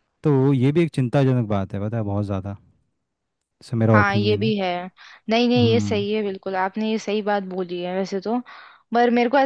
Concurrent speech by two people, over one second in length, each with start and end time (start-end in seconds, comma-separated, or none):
none